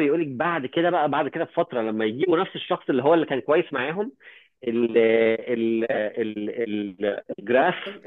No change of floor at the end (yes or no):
yes